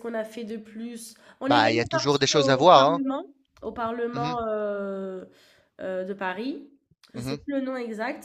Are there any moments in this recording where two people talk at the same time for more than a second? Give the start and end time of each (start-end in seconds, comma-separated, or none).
1.5-3.0